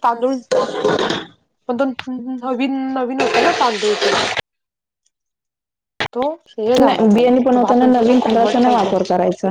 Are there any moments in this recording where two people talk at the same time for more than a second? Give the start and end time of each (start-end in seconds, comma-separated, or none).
6.8-9.0